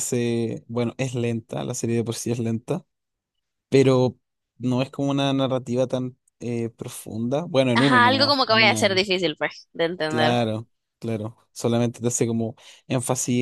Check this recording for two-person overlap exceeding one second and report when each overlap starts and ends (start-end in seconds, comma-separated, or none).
7.7-9.0